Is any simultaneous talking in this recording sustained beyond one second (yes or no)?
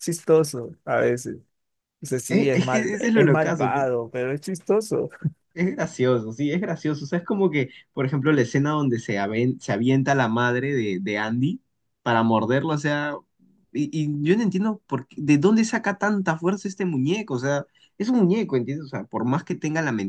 yes